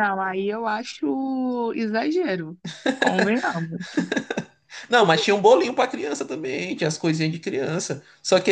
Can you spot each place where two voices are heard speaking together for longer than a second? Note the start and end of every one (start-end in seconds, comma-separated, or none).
none